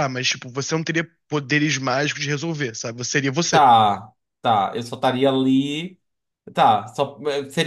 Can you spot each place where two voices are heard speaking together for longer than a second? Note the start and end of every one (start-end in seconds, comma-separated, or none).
none